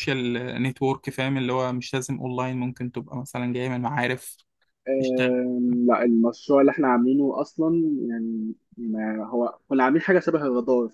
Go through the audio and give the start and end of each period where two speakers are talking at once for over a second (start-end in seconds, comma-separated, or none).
none